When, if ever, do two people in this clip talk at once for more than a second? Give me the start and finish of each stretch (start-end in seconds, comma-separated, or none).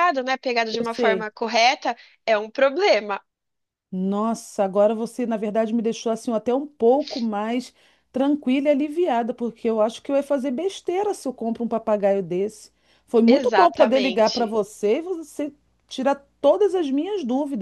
13.3-14.6